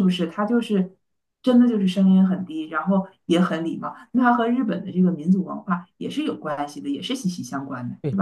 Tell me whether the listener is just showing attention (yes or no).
no